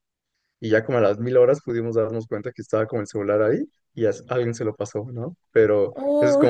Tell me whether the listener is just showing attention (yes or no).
yes